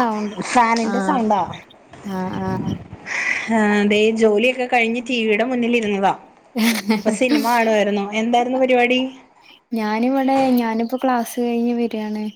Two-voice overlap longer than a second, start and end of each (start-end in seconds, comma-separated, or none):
none